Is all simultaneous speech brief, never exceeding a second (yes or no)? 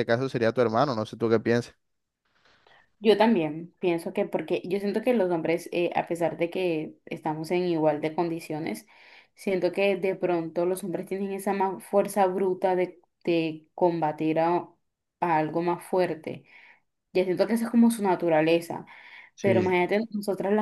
yes